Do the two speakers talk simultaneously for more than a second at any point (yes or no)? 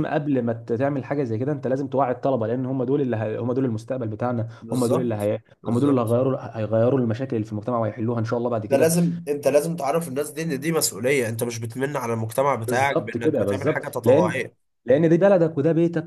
yes